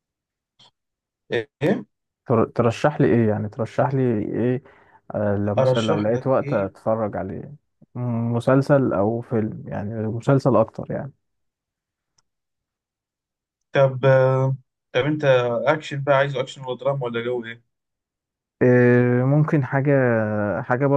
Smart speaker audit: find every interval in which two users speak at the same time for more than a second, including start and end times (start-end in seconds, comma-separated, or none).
5.6-6.8